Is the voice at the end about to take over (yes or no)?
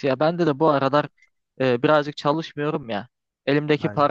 no